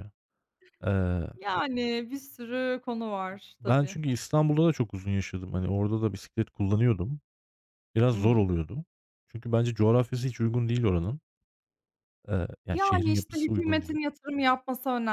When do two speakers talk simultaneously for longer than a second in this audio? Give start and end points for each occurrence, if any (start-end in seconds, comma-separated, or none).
12.7-14.0